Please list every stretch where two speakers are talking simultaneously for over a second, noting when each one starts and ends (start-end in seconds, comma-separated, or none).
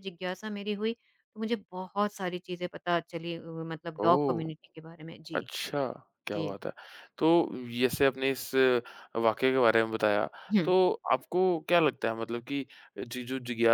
none